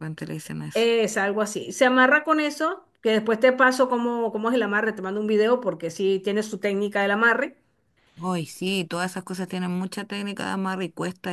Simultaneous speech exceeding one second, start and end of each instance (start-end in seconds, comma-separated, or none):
none